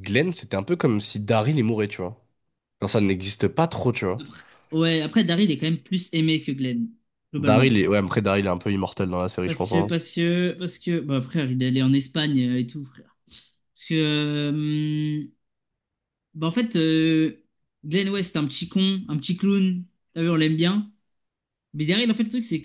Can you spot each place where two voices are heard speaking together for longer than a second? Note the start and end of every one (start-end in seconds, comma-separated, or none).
none